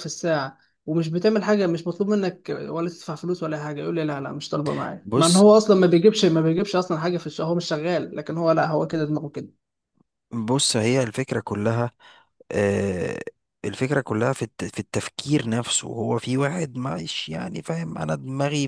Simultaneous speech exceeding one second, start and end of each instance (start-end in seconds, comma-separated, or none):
none